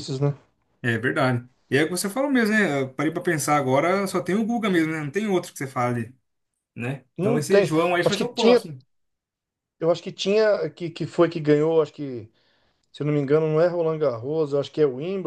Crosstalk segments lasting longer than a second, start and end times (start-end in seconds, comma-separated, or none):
7.2-8.6